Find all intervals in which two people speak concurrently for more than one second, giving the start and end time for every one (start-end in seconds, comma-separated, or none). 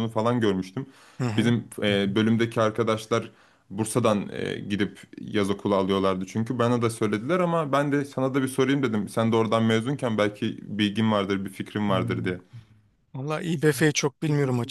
none